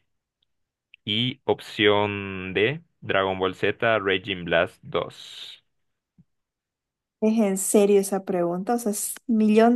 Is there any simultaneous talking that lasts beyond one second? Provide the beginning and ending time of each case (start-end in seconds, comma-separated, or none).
none